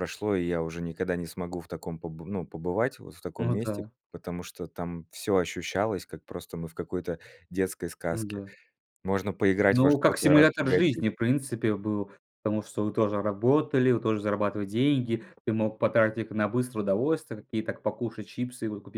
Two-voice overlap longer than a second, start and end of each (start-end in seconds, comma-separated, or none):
9.7-11.1